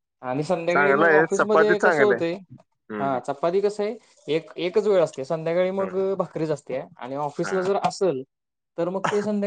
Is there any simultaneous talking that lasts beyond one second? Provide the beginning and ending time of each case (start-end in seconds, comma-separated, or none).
0.7-2.2